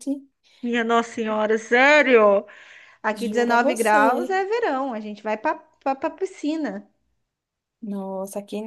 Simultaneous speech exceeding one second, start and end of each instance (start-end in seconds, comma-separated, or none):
3.1-4.4